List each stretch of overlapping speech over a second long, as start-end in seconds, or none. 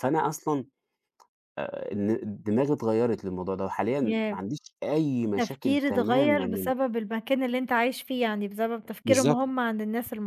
5.2-6.7